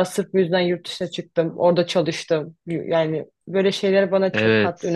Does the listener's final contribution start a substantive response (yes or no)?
yes